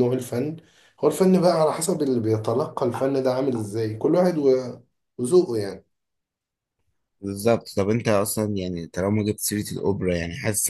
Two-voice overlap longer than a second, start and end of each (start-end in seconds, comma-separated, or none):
none